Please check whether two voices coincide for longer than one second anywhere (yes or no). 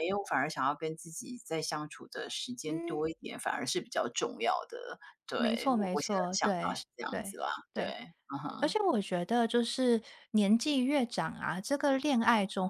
yes